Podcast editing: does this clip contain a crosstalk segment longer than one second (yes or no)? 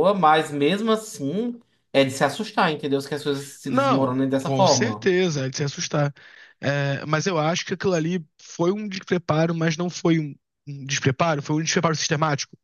yes